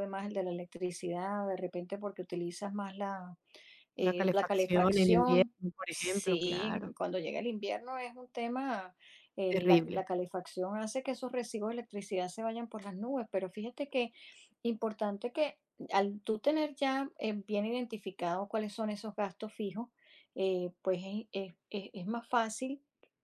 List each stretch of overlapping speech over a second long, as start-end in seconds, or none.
4.0-7.0